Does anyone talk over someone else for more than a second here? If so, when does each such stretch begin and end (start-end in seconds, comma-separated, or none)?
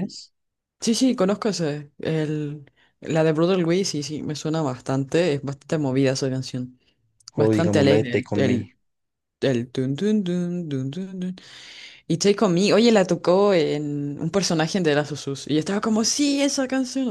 7.3-8.7